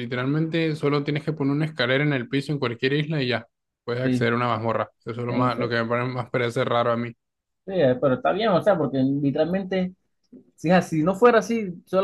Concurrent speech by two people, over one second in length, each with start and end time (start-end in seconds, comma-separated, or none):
none